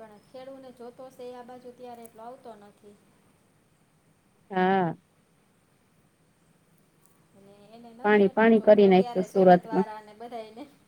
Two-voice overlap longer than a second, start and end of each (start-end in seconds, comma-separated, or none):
8.0-9.9